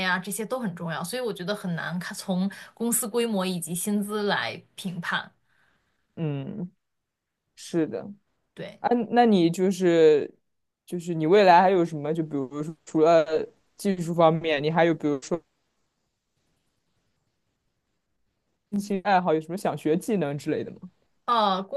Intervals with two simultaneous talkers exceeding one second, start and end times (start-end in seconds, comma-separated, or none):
none